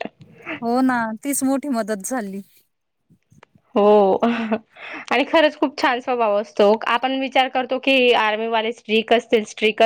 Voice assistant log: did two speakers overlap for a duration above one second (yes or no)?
no